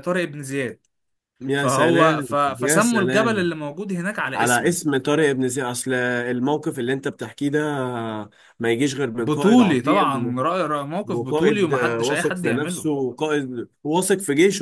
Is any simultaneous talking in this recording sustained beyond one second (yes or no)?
yes